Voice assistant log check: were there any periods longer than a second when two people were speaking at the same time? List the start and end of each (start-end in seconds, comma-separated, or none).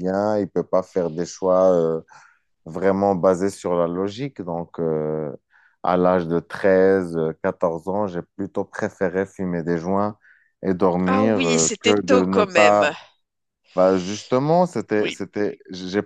11.1-12.8